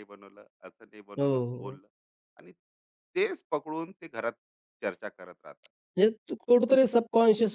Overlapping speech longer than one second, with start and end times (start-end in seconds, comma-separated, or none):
none